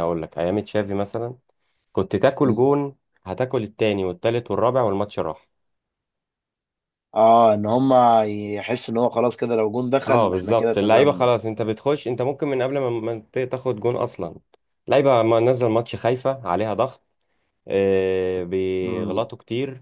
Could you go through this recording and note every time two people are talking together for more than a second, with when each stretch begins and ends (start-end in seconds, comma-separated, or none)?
10.1-11.3